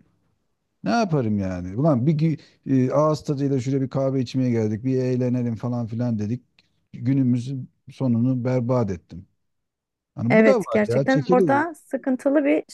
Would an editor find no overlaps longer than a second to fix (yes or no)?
no